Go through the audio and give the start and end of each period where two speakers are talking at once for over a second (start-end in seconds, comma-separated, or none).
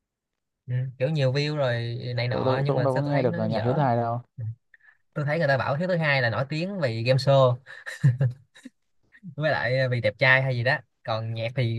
2.3-3.8